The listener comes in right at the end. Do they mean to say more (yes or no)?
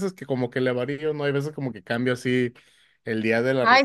yes